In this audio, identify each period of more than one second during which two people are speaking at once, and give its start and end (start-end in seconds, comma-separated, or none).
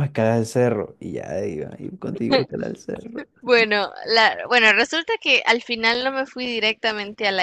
none